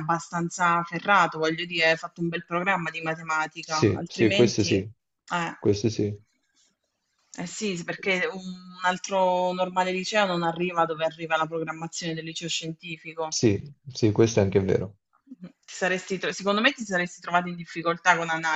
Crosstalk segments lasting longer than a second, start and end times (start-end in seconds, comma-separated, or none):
3.6-4.9